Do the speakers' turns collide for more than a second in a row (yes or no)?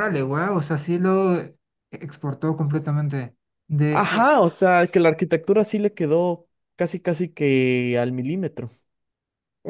no